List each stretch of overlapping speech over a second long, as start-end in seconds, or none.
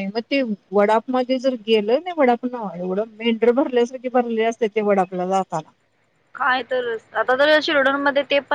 none